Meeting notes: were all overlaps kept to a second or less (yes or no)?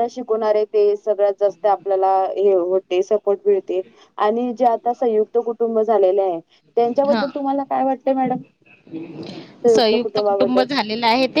yes